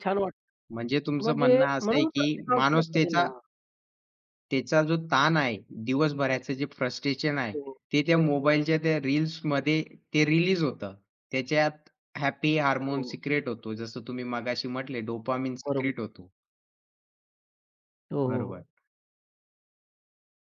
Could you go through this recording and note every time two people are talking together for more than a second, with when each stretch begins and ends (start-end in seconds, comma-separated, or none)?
0.7-3.3